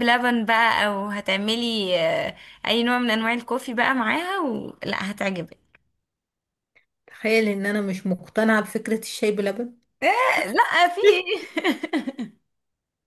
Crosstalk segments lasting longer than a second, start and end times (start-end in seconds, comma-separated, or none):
none